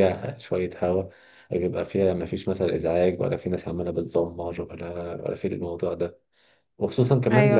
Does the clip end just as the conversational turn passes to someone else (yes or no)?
no